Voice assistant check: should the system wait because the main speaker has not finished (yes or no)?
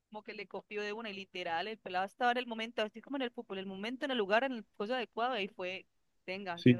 no